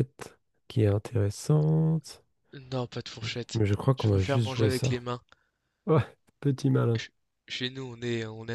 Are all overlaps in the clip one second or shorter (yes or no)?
no